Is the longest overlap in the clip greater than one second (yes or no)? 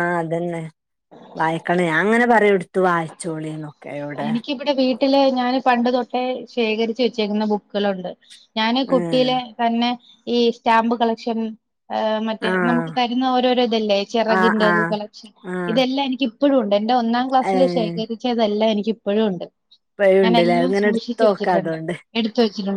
yes